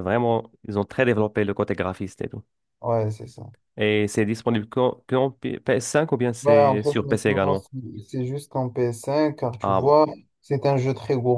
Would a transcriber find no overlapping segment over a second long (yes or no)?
no